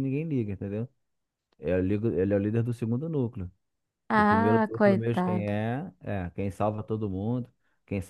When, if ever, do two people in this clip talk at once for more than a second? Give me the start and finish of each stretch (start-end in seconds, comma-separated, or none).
4.1-5.6